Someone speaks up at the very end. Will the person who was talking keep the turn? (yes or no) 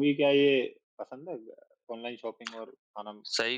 no